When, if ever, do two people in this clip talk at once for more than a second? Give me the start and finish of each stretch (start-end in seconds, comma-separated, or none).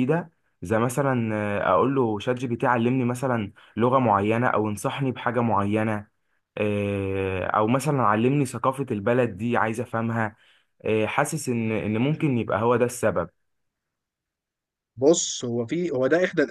none